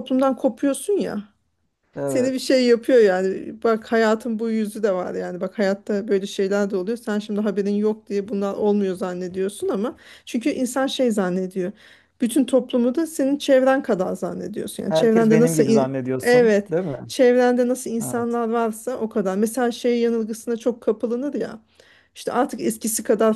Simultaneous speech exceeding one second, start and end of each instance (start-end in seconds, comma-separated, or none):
14.9-16.7